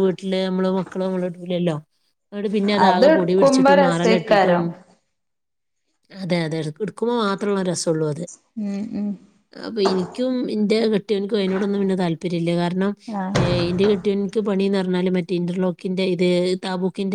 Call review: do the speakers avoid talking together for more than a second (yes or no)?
no